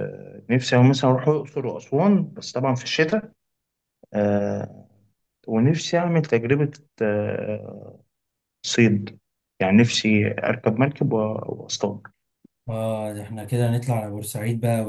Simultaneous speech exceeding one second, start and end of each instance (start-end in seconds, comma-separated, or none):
none